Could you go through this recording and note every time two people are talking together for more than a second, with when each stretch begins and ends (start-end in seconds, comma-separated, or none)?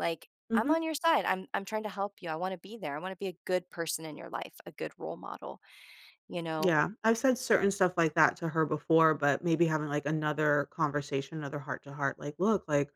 none